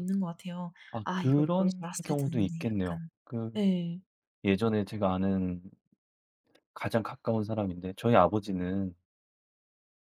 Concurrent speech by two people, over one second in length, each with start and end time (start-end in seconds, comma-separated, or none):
0.9-3.1